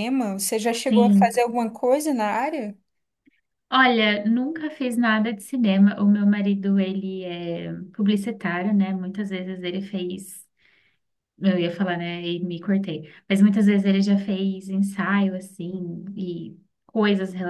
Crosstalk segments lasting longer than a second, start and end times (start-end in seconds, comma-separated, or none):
none